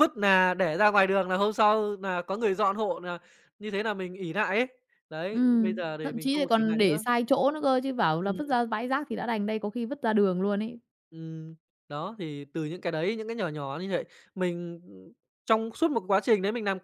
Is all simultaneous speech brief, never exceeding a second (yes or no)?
no